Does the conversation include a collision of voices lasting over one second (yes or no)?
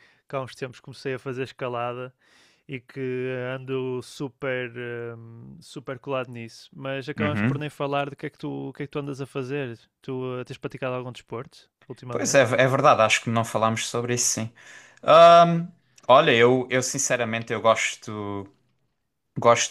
no